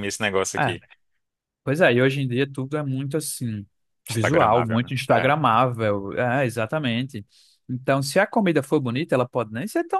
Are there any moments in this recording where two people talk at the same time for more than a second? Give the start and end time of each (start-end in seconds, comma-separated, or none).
4.1-5.3